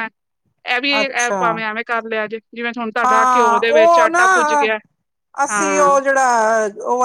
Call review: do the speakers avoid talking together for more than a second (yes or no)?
no